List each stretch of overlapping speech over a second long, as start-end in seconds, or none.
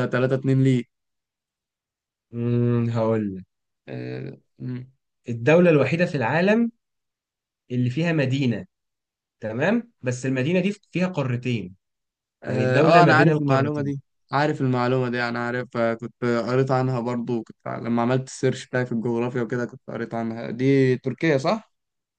12.5-13.9